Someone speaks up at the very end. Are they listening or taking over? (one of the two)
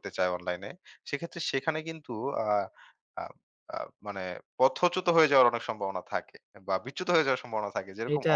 listening